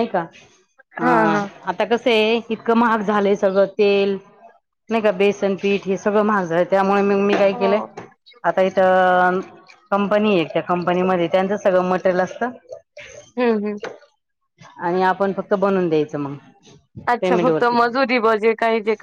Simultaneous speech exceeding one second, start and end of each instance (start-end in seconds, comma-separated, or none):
none